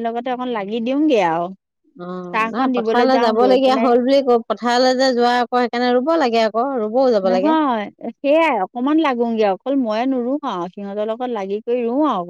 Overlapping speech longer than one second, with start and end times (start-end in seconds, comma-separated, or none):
2.3-3.9